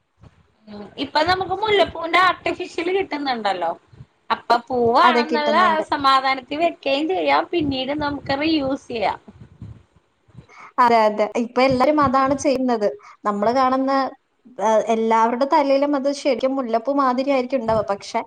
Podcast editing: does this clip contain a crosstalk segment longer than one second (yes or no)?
no